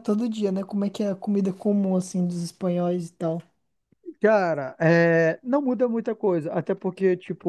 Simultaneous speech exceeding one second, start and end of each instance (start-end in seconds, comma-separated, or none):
none